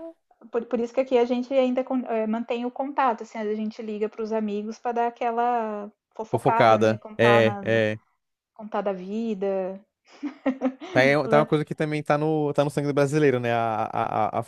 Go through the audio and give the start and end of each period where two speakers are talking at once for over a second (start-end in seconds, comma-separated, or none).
6.3-7.8